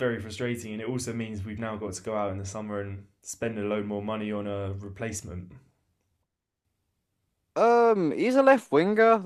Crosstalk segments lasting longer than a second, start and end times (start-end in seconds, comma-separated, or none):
none